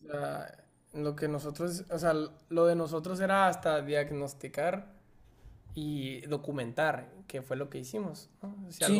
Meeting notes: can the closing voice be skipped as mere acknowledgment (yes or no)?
no